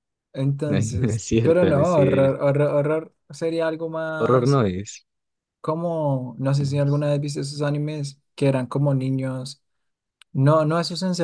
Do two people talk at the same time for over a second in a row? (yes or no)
yes